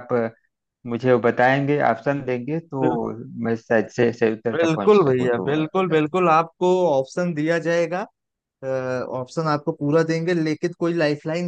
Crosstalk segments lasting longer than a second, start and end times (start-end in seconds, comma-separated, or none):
4.5-6.0